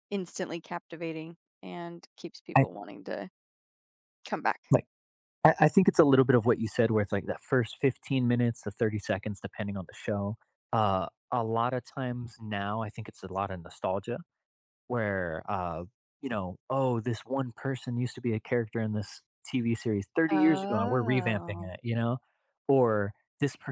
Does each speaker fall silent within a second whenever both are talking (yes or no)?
no